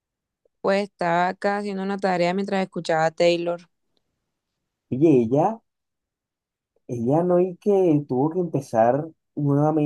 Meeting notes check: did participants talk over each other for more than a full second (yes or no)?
no